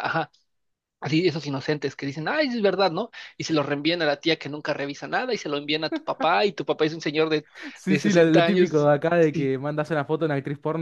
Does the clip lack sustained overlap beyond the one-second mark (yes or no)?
no